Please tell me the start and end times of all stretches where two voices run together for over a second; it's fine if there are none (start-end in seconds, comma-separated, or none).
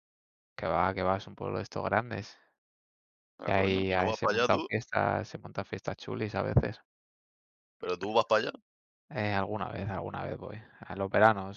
3.5-4.7